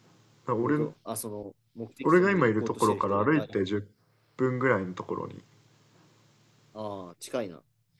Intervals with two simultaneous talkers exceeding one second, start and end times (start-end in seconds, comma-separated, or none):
2.0-3.5